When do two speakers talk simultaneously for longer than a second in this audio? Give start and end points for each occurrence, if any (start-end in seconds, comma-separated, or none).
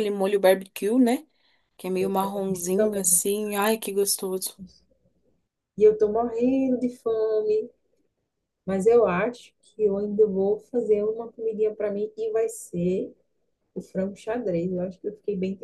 2.0-3.2